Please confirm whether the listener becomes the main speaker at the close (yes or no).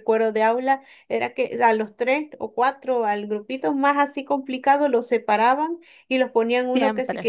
no